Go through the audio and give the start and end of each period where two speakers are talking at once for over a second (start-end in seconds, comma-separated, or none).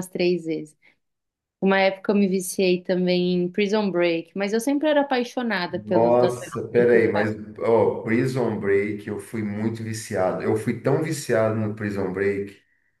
5.7-7.3